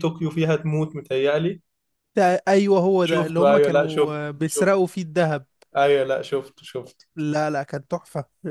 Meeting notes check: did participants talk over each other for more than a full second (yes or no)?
yes